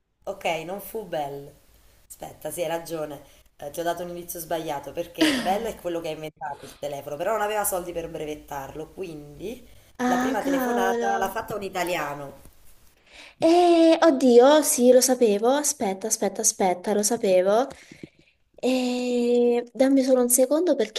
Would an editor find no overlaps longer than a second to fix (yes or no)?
no